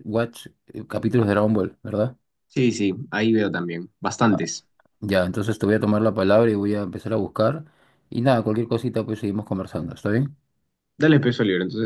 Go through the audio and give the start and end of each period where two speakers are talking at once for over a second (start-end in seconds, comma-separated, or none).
none